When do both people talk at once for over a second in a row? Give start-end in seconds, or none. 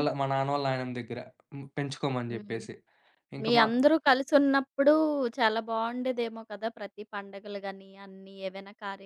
none